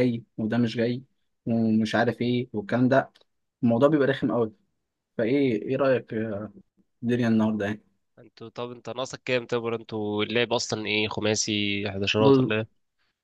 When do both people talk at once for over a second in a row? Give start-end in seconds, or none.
none